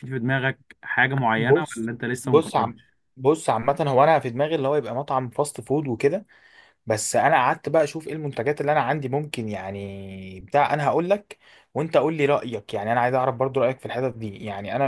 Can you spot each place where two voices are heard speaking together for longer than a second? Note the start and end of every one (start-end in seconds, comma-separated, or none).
1.4-2.8